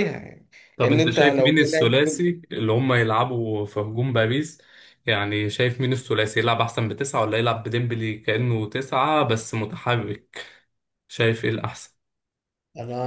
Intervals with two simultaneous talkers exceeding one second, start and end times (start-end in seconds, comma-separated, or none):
0.8-2.2